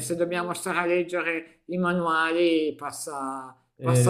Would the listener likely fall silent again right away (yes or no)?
yes